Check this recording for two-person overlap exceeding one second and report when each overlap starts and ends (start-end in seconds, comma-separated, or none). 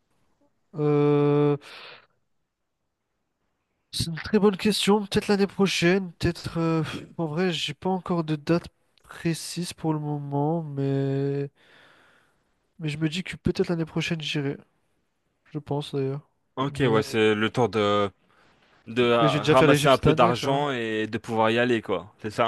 19.2-20.6